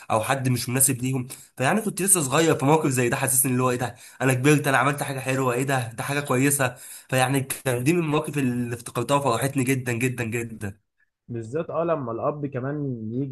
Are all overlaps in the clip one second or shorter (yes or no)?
yes